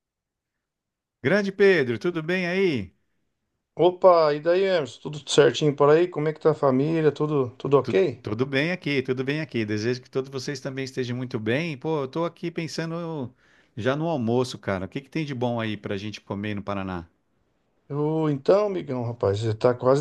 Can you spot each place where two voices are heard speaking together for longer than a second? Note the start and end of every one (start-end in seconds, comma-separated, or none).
none